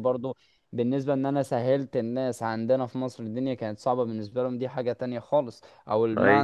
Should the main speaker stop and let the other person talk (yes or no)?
no